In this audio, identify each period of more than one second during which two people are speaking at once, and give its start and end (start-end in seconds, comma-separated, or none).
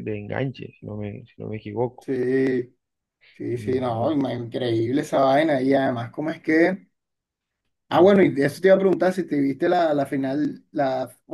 none